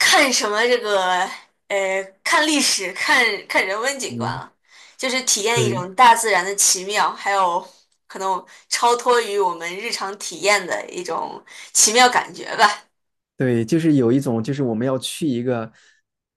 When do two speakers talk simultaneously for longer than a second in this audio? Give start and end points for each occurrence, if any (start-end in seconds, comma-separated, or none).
none